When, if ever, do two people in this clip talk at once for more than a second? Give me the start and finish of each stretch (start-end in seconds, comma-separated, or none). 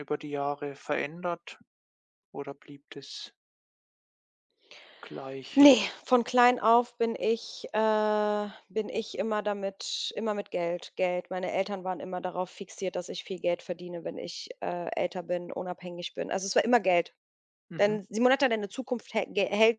none